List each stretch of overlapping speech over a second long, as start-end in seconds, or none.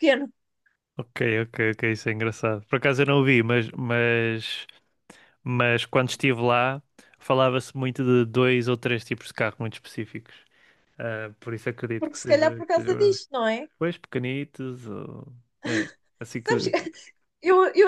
12.0-13.2